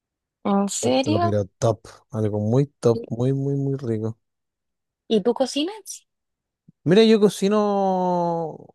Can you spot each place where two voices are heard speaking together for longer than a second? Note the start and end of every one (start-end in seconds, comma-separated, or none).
none